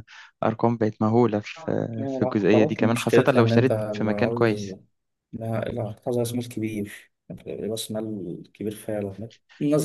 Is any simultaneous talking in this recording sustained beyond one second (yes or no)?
yes